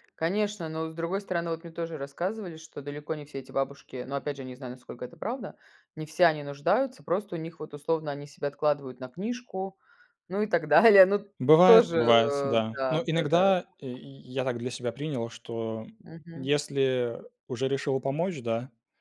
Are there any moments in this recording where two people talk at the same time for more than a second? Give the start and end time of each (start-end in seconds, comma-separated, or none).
11.6-13.5